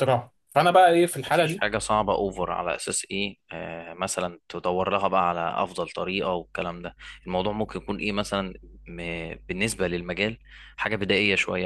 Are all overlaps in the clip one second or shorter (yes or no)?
yes